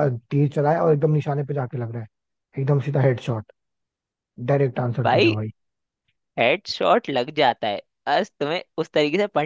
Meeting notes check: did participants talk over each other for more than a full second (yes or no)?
no